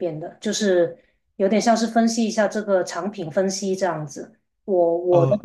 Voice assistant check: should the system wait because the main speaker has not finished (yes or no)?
yes